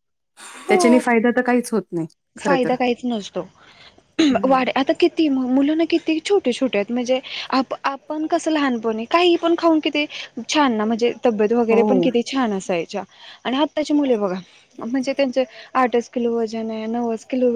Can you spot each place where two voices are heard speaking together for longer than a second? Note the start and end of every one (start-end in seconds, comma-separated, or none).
none